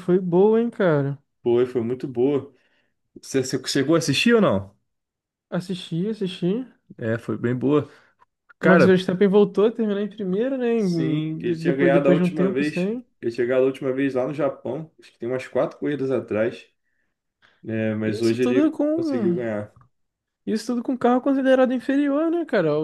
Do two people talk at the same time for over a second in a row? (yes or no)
yes